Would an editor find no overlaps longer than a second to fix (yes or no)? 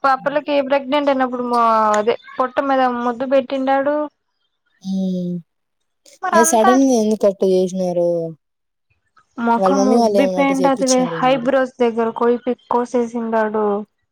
no